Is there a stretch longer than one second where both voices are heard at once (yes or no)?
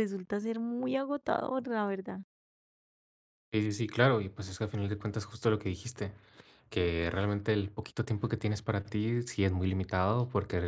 no